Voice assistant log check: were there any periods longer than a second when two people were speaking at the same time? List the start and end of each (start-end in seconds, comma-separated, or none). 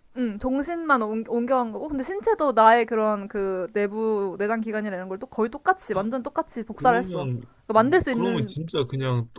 none